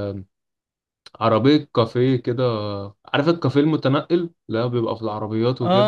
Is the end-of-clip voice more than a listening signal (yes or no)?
yes